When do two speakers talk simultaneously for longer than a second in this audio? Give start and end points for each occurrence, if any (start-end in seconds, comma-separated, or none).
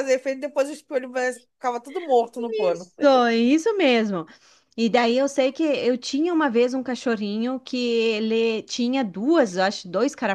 none